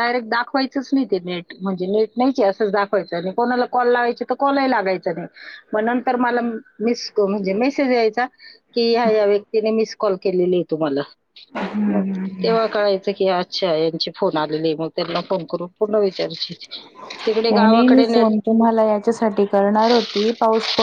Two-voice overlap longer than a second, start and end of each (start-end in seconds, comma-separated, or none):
none